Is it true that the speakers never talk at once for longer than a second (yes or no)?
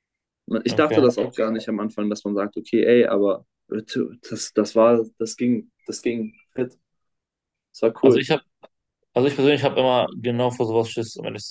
yes